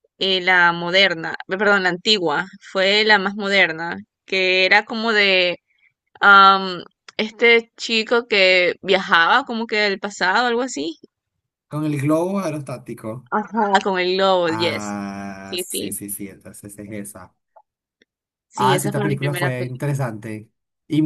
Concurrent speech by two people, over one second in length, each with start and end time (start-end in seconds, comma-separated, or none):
18.5-19.8